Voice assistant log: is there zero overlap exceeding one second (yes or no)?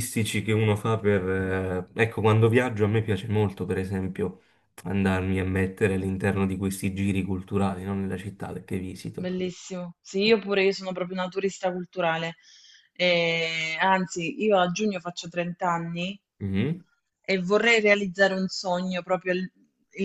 yes